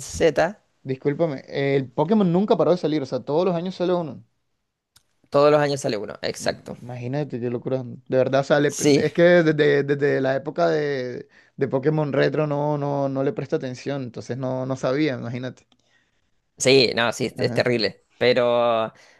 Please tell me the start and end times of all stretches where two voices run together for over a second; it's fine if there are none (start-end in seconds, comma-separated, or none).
none